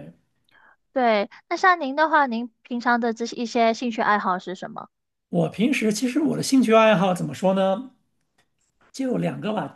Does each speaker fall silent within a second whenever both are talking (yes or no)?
yes